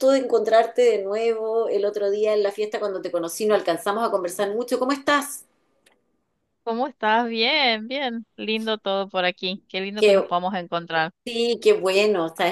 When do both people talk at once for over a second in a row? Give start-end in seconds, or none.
none